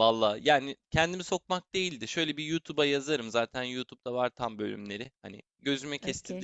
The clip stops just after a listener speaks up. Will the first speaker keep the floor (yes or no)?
yes